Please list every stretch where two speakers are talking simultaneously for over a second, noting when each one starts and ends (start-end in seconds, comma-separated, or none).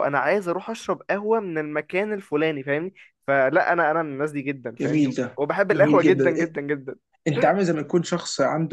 4.8-6.5